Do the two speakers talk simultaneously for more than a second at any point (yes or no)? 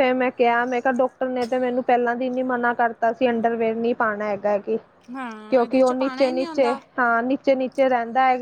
yes